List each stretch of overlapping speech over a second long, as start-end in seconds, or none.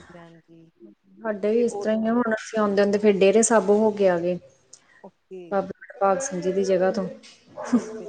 none